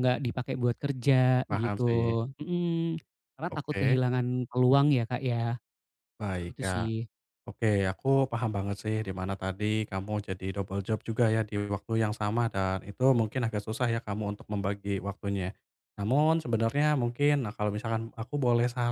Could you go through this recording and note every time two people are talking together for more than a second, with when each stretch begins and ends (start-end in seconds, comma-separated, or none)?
none